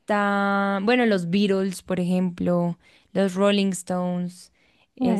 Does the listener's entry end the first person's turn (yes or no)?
no